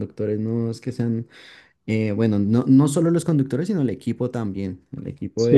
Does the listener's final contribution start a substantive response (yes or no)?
yes